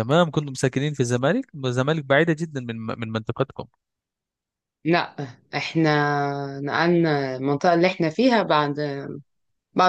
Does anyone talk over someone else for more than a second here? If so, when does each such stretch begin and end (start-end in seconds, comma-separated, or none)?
none